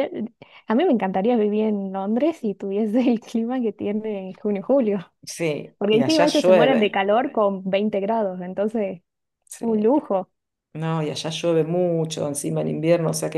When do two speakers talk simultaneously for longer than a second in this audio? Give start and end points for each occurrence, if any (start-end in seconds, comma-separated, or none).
5.8-7.0